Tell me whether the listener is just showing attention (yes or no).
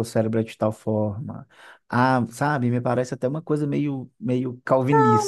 no